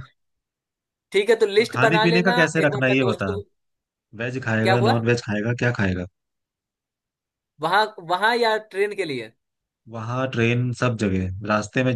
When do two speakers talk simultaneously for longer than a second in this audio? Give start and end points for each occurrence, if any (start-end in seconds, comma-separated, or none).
1.6-3.3